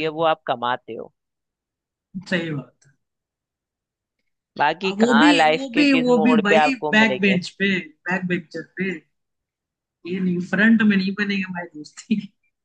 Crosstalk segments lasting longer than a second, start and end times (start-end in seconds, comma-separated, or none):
4.9-7.4